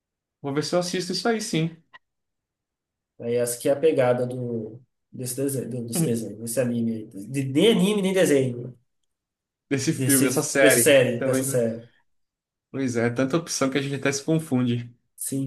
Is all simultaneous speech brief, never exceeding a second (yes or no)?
no